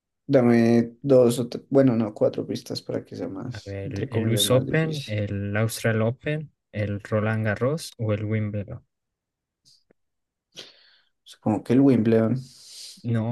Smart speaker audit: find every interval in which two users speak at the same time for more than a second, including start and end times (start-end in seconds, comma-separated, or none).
3.5-5.1